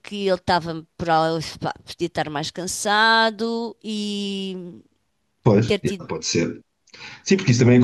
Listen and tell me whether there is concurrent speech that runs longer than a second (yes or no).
no